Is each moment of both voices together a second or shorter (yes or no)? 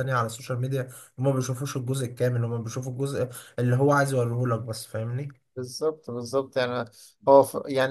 yes